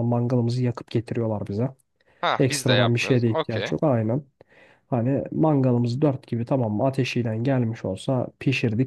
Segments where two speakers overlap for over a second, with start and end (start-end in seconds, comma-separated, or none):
2.4-3.7